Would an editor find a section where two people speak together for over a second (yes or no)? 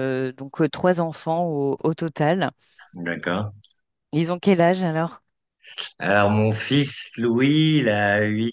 no